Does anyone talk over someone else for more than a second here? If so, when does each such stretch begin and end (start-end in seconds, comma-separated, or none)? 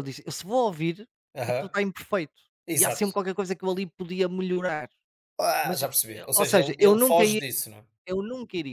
5.6-7.4